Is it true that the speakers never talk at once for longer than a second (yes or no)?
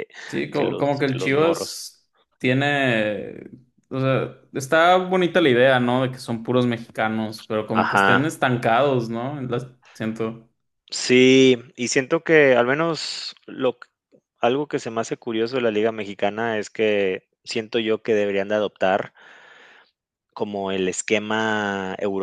no